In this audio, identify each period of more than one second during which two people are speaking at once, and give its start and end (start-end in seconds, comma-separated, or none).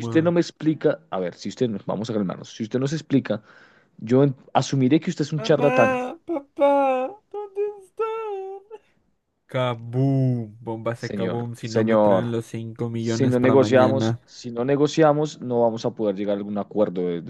10.9-12.3, 13.0-14.2